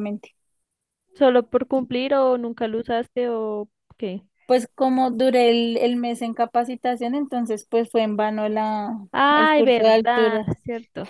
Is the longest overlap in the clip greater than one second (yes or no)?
yes